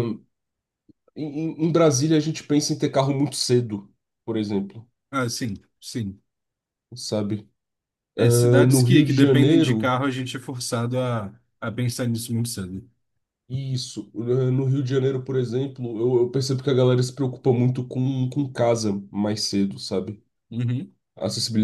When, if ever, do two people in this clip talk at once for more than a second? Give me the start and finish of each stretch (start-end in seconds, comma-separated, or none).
8.2-9.9